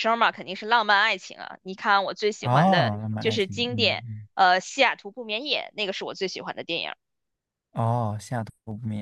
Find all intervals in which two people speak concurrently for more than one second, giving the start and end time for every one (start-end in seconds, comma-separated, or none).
2.4-4.3